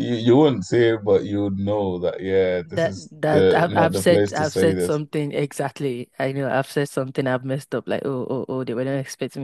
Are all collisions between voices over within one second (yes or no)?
no